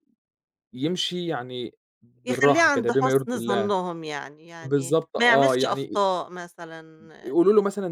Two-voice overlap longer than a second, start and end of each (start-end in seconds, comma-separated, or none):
2.2-3.7, 4.6-6.0